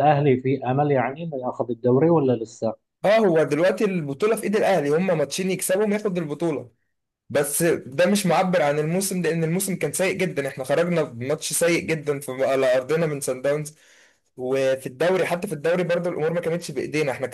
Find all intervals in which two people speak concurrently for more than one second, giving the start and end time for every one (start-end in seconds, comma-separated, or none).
none